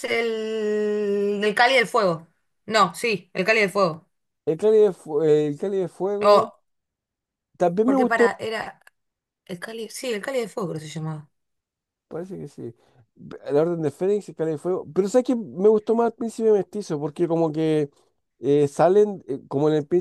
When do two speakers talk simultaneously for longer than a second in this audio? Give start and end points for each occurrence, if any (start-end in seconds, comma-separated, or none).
none